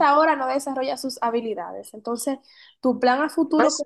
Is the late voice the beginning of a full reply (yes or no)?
no